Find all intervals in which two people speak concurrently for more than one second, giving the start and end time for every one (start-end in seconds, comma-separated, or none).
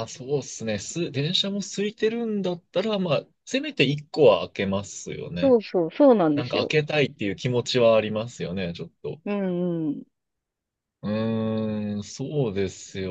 none